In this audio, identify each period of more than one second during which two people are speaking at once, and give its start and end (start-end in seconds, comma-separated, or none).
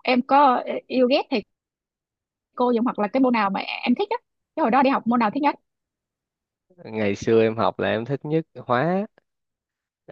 none